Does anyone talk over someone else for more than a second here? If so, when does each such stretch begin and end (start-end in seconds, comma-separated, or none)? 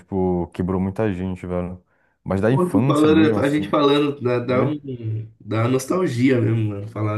2.5-3.7